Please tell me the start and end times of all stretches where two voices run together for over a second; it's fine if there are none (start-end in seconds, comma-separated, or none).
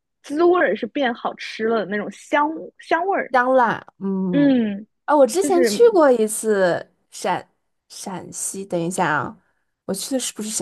none